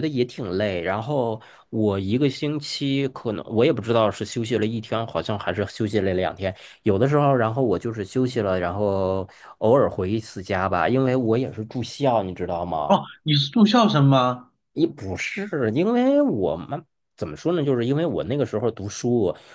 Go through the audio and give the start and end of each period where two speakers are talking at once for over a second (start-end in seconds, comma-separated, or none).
none